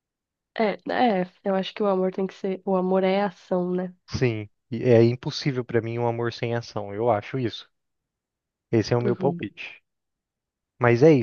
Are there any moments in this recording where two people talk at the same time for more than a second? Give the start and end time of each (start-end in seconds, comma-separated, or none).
none